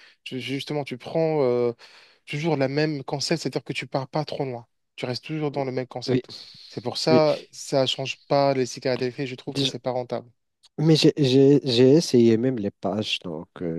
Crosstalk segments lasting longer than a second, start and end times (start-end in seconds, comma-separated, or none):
none